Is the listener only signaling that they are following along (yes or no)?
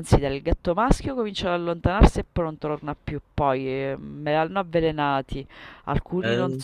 yes